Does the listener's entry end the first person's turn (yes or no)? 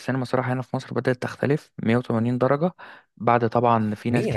yes